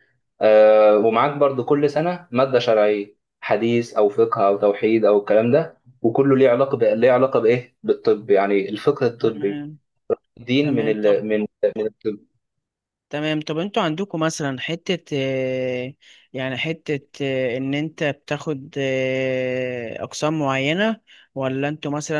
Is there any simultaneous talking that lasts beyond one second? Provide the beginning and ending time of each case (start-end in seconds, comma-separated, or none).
none